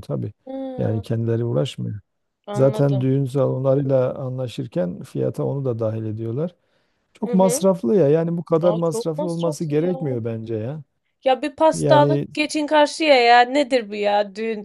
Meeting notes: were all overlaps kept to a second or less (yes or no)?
no